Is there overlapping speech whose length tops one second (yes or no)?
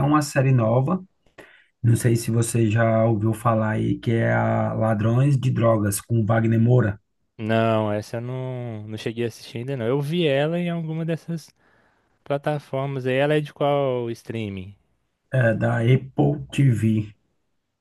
no